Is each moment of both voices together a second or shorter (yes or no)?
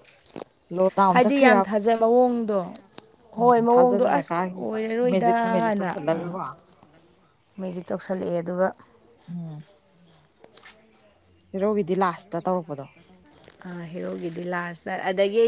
no